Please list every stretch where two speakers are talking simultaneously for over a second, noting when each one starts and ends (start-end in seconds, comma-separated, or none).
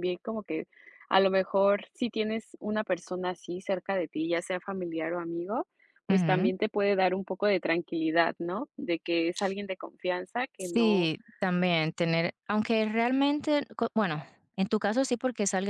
none